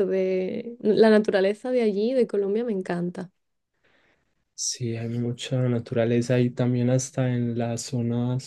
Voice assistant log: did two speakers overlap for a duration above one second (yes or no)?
no